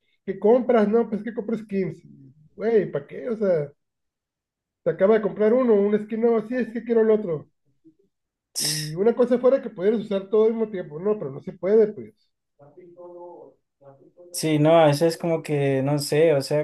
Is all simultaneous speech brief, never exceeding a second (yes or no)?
yes